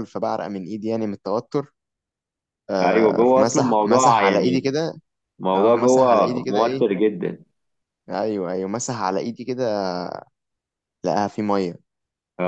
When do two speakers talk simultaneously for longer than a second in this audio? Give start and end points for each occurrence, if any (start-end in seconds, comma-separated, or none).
2.8-4.7, 5.5-6.9